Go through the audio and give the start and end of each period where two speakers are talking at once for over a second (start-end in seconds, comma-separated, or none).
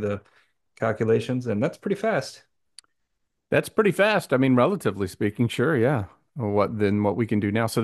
none